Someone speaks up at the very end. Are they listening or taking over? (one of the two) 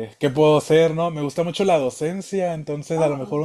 listening